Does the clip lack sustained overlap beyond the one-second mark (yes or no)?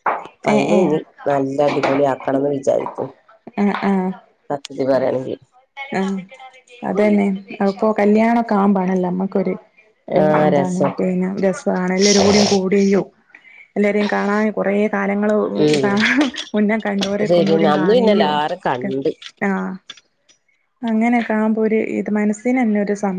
yes